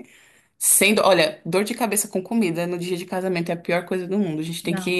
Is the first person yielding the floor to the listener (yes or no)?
no